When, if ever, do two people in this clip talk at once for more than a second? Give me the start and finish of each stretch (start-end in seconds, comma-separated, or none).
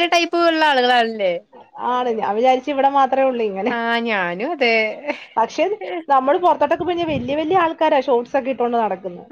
none